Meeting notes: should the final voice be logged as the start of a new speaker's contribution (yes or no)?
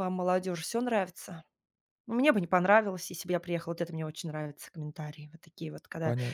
yes